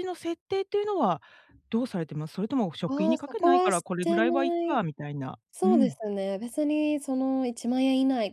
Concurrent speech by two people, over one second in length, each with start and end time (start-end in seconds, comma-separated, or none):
2.9-4.8